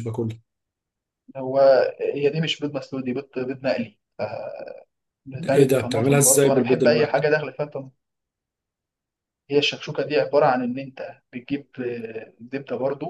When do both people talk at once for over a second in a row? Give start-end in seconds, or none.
5.5-7.2